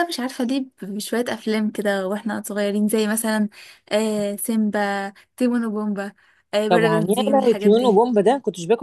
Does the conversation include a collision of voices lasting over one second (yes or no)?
yes